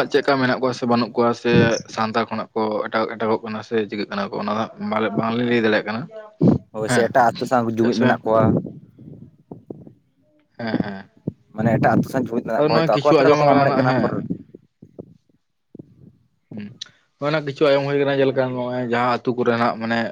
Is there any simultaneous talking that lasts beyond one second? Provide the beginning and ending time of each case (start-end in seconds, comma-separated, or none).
12.6-14.0